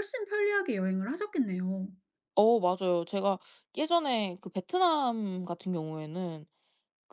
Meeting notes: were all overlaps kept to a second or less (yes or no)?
yes